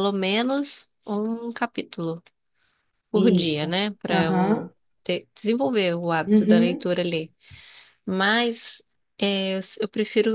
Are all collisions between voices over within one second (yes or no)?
no